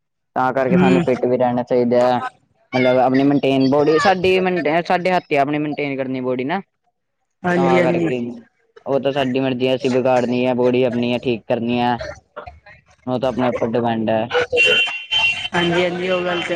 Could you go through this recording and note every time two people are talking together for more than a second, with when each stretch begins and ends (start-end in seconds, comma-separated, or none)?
none